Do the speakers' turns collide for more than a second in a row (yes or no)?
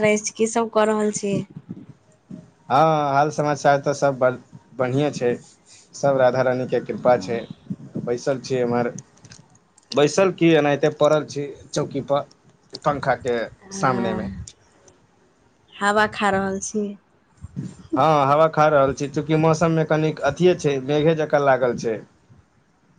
no